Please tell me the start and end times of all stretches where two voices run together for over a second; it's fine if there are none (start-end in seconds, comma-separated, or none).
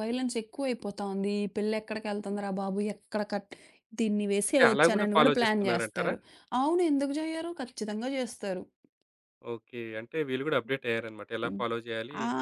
4.5-6.1